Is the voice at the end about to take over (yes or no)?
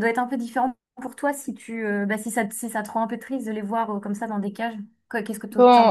yes